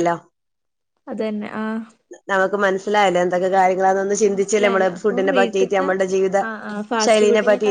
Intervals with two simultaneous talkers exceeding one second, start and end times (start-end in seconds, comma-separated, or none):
4.3-5.9